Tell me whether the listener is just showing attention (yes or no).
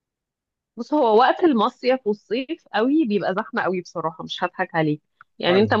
yes